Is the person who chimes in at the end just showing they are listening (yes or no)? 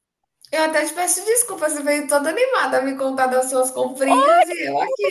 no